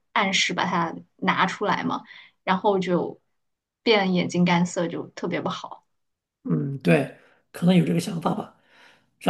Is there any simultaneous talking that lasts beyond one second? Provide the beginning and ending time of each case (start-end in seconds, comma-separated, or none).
none